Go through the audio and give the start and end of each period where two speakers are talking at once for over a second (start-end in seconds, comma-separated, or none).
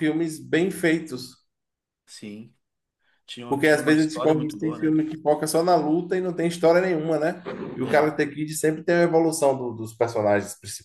3.5-4.9